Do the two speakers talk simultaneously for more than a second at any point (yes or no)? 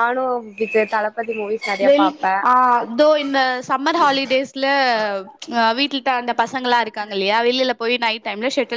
no